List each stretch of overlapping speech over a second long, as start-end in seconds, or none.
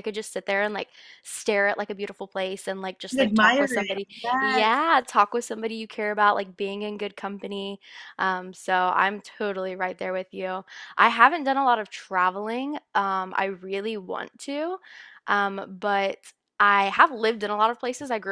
3.1-4.7